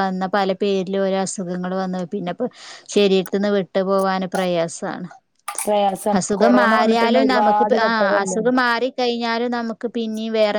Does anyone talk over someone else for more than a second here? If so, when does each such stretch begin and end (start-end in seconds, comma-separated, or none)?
6.2-8.4